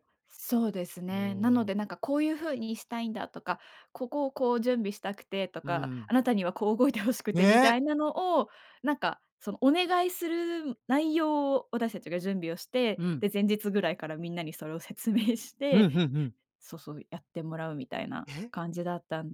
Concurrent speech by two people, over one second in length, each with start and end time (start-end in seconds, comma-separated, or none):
none